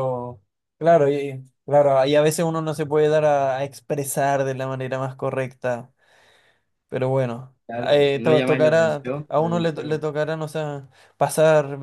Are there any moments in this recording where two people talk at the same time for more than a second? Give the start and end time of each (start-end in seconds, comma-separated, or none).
7.7-10.0